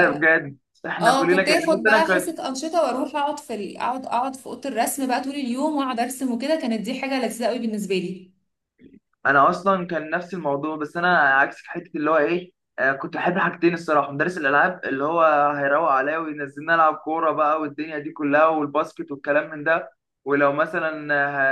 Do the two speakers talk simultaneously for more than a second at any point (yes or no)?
yes